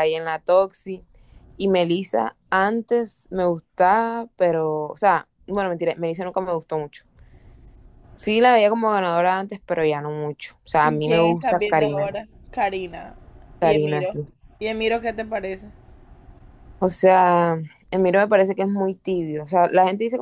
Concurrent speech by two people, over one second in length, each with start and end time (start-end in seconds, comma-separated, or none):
10.8-12.1